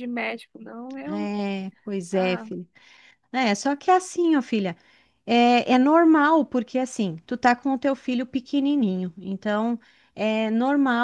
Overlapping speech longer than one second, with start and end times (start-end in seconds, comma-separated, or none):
none